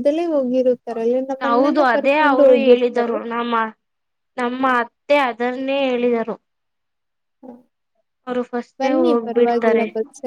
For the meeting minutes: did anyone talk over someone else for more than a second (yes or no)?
yes